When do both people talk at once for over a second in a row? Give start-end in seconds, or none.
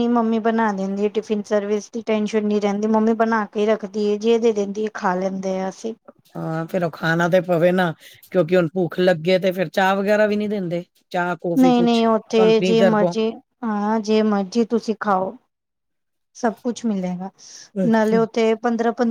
11.6-13.1